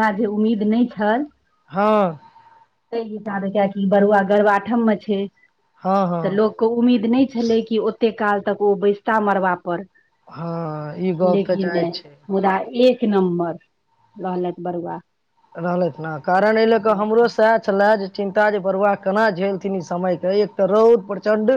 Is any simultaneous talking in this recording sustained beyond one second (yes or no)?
no